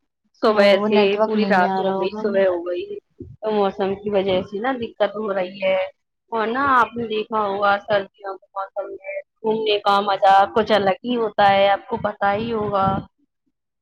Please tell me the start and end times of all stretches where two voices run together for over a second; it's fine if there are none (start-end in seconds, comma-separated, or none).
0.5-2.6